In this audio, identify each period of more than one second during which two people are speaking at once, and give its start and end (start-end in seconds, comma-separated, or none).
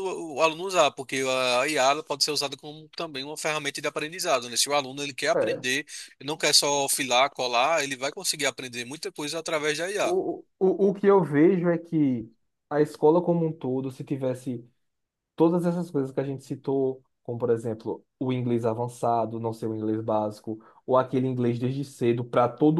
none